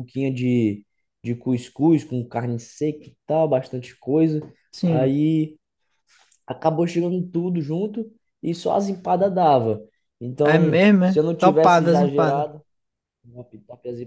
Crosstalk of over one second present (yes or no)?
yes